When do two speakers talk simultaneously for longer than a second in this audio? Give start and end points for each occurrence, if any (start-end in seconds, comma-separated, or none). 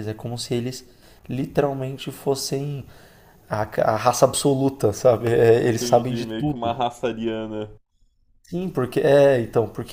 5.6-6.9